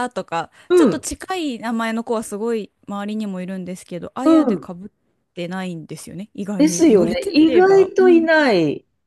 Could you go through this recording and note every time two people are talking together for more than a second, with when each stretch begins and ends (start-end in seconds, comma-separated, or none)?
6.6-8.3